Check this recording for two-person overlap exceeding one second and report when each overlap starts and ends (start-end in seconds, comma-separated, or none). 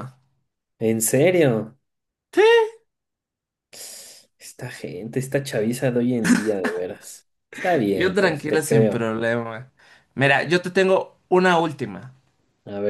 7.9-9.1